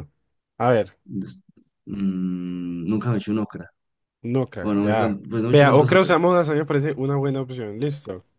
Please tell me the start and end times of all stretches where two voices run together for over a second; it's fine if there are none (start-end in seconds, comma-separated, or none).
4.6-6.4